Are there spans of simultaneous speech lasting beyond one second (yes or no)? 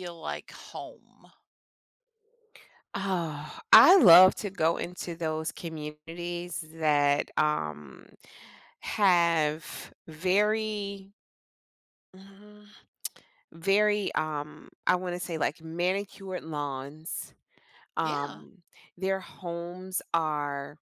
no